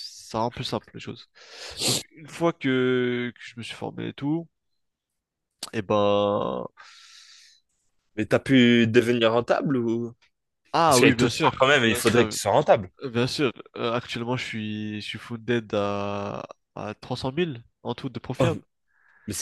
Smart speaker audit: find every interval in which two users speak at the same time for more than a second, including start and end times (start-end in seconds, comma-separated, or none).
10.8-12.3